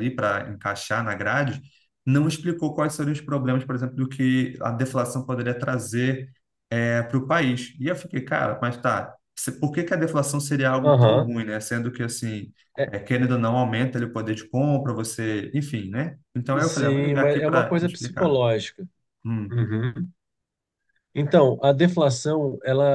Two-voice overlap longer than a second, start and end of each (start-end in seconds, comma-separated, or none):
16.6-18.4